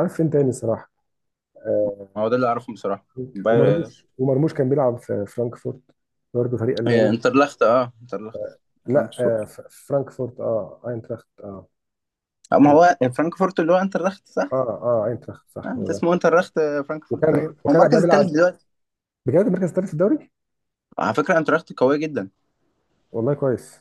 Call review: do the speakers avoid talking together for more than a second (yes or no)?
no